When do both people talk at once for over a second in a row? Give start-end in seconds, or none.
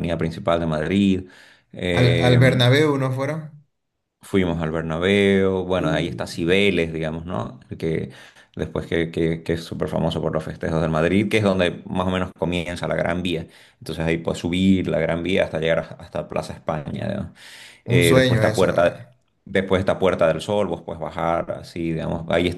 17.9-19.1